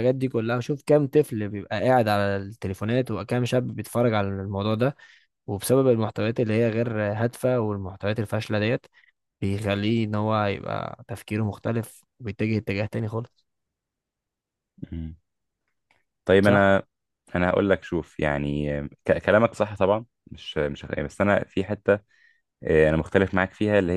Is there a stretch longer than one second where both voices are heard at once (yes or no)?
no